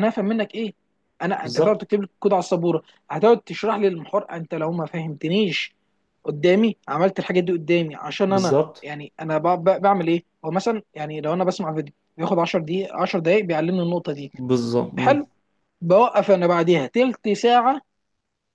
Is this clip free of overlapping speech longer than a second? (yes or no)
yes